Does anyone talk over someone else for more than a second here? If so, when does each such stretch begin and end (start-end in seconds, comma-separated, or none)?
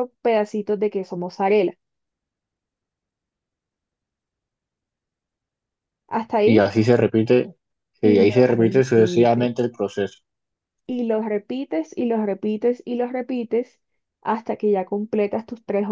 8.0-9.5